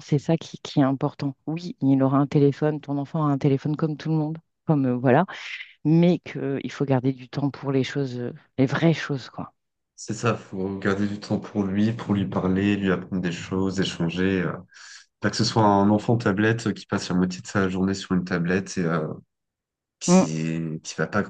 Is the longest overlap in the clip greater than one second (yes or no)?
no